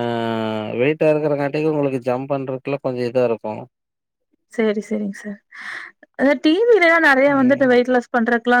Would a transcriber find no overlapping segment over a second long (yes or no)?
yes